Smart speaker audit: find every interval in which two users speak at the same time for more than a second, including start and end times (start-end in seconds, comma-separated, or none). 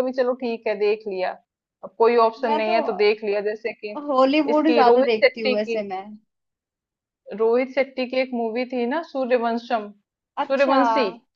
4.5-5.8